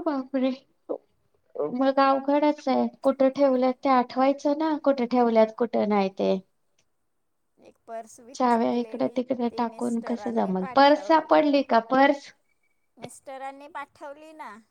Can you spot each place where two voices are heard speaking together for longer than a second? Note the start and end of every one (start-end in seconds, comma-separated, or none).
8.4-11.3